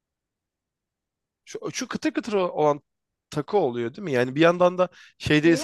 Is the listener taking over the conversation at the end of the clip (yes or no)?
no